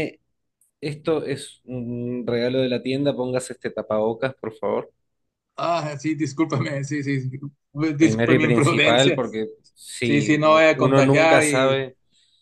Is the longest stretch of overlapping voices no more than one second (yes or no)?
no